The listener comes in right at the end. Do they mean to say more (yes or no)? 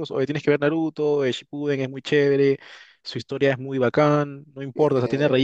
no